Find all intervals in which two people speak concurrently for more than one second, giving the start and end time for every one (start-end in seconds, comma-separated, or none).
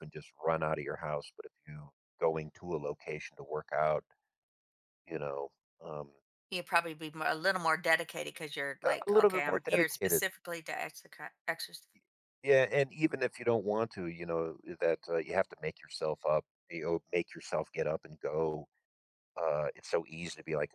8.8-10.2